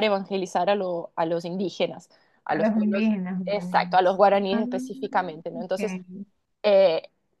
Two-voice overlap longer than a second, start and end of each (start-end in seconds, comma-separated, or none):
2.5-4.6